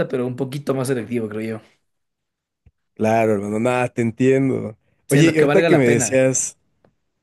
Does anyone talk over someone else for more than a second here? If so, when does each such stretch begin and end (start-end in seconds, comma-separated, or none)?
5.1-6.3